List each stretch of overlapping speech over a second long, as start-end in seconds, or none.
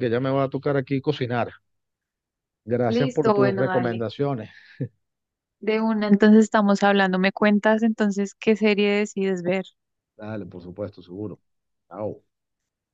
2.9-4.1